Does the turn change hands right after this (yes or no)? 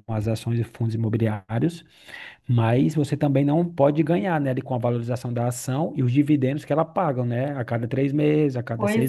no